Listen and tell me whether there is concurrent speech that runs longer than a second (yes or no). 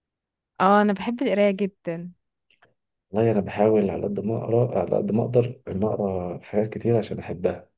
no